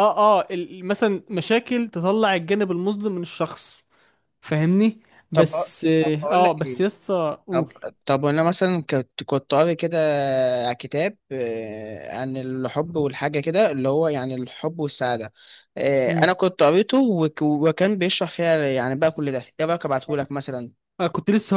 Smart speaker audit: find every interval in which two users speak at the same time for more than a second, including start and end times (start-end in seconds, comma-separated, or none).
5.3-6.8